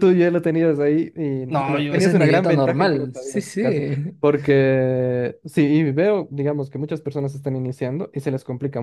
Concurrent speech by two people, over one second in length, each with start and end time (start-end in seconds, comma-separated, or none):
1.5-3.6